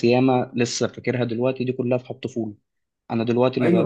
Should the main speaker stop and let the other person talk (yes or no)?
yes